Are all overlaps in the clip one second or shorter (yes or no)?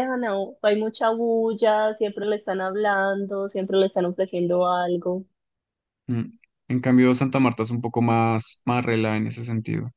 yes